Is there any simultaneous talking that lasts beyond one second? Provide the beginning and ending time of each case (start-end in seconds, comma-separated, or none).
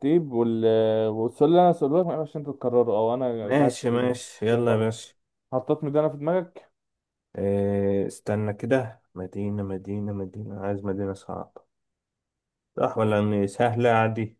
3.4-4.9